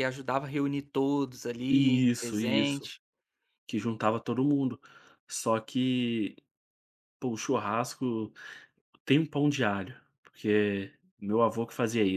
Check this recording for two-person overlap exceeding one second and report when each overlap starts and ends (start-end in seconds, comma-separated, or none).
1.7-2.9